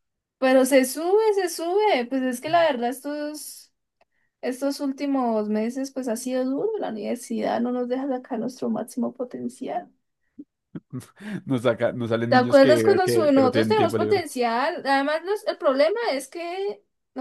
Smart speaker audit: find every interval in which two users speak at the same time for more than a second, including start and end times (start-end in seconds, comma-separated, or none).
12.3-14.2